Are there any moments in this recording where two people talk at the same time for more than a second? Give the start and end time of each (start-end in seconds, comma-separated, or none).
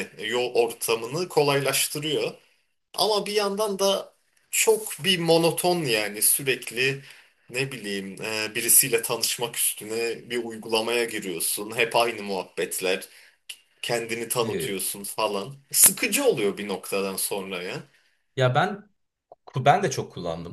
none